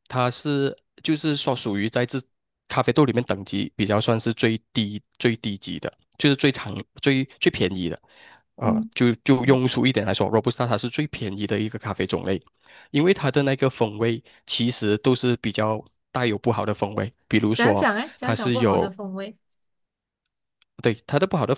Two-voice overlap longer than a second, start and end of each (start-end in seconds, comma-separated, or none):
17.6-18.9